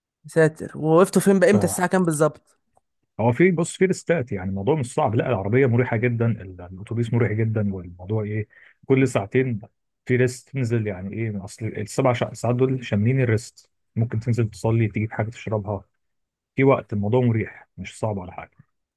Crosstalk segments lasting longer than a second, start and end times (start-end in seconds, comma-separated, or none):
none